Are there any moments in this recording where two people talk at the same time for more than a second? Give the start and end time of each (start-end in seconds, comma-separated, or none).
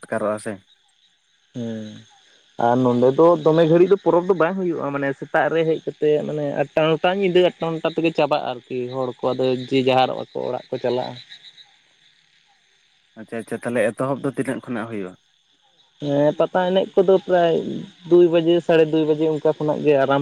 none